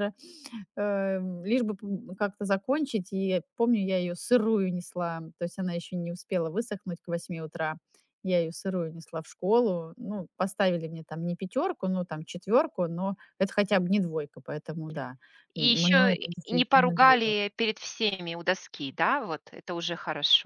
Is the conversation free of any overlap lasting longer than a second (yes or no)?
no